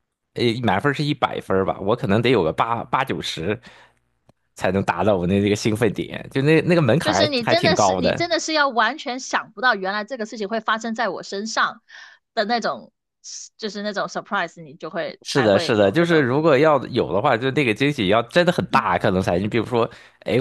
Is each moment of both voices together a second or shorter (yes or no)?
no